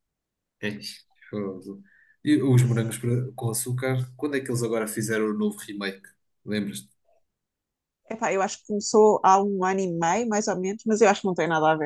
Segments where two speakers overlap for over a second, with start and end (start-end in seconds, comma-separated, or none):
none